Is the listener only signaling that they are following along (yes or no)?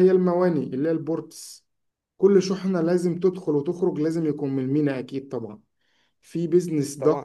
yes